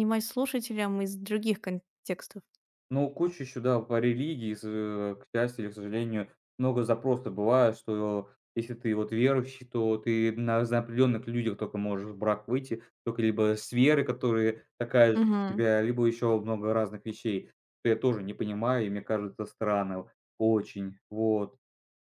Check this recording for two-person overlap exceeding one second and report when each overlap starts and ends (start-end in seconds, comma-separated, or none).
none